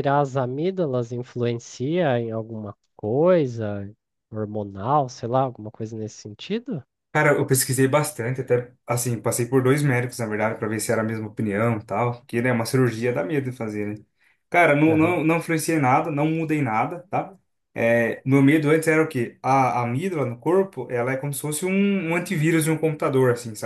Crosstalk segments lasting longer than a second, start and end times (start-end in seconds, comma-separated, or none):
none